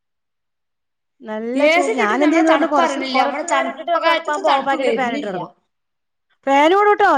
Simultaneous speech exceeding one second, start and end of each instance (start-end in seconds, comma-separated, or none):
1.9-5.4